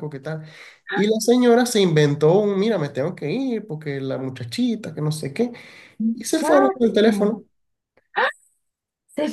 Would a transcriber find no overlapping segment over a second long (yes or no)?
no